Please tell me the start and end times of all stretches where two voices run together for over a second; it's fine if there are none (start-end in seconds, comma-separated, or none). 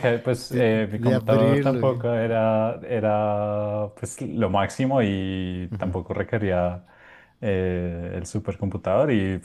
0.5-2.0